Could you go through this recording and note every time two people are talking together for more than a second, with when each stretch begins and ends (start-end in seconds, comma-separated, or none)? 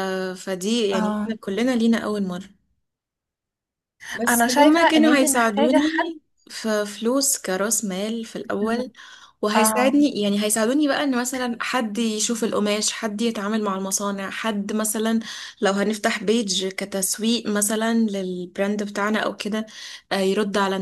4.3-5.8